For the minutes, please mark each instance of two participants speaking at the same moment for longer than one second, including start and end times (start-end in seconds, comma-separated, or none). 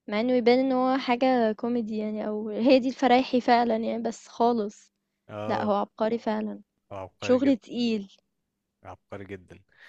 none